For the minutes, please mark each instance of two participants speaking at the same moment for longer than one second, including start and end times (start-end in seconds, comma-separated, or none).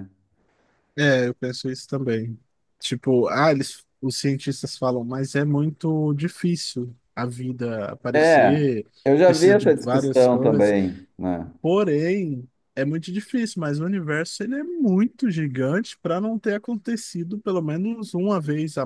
9.2-10.7